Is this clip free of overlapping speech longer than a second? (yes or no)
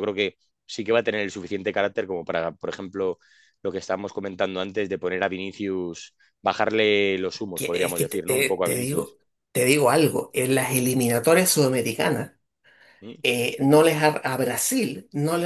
no